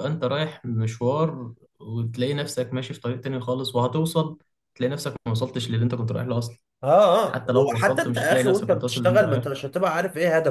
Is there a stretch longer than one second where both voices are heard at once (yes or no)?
yes